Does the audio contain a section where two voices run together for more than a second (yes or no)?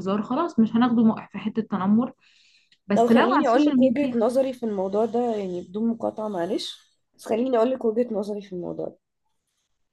yes